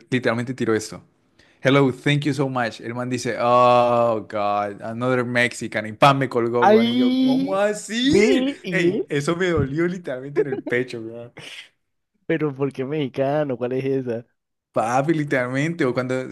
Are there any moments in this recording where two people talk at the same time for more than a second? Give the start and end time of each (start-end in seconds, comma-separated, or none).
6.6-9.0